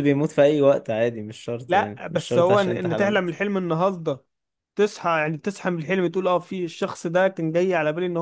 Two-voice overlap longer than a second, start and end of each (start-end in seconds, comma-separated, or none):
1.7-3.4